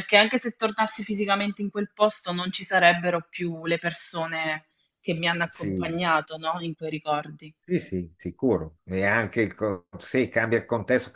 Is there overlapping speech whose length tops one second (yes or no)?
no